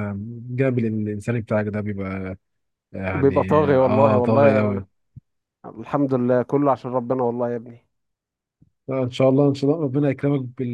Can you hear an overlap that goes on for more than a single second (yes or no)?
yes